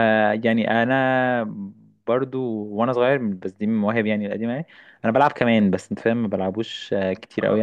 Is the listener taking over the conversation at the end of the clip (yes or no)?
yes